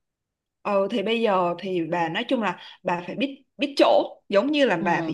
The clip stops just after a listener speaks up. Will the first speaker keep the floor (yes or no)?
yes